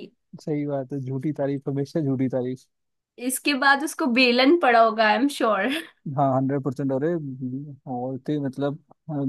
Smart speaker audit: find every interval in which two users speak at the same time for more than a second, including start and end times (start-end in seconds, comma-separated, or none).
none